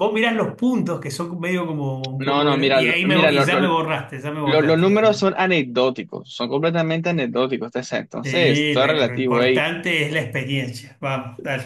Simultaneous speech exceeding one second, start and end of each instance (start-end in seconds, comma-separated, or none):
2.2-3.7, 8.2-9.7